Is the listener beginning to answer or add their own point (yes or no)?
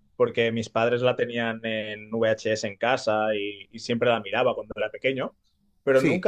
no